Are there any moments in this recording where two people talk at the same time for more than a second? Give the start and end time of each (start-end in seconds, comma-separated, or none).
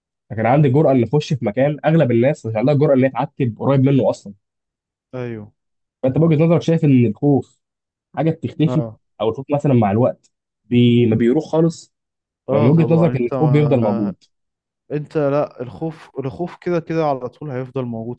12.5-14.1